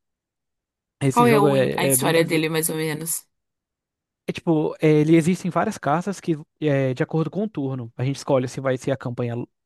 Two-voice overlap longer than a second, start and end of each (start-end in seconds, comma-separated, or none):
1.1-2.4